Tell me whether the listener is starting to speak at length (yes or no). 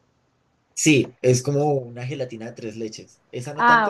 yes